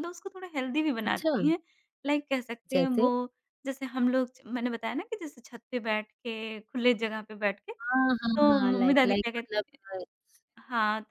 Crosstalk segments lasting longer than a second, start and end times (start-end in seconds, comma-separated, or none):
8.2-9.6